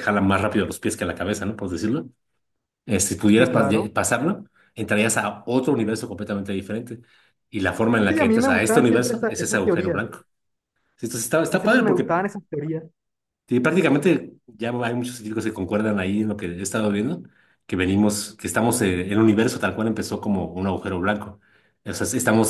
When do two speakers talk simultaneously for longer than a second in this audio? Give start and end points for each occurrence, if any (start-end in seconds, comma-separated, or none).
8.1-10.0